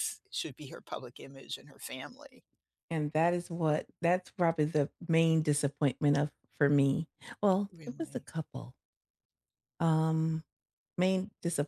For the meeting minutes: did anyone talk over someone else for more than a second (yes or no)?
no